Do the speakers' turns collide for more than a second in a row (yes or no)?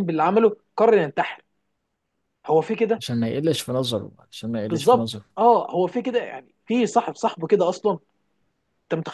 no